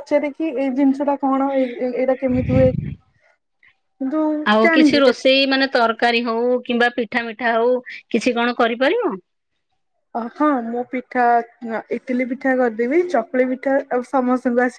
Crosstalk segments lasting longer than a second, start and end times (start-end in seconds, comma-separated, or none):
none